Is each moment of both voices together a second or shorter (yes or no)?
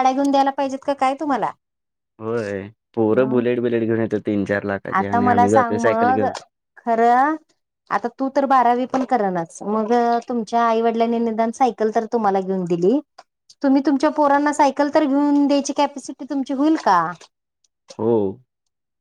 no